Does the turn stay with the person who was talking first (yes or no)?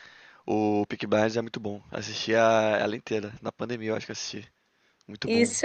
no